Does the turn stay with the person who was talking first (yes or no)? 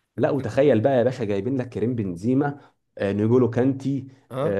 yes